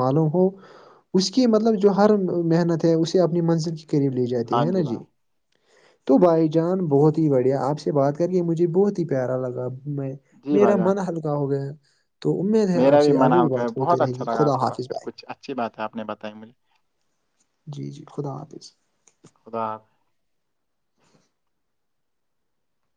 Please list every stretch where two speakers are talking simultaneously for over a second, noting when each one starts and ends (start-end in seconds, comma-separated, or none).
12.8-15.1